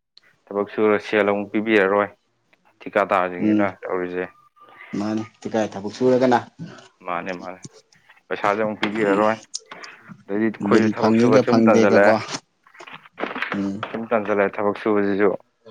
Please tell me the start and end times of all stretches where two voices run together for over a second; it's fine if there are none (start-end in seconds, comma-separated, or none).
10.7-12.1